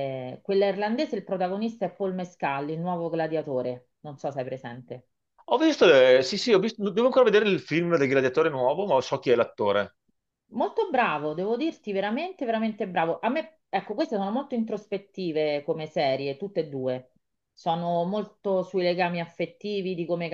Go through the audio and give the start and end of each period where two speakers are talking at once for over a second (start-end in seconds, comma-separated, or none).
none